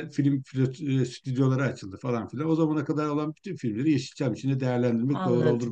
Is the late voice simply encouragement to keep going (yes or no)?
no